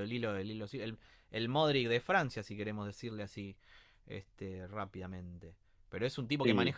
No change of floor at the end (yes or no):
yes